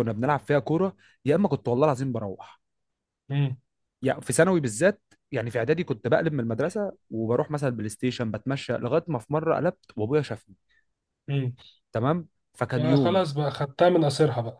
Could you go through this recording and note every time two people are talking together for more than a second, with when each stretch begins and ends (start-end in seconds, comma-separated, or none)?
none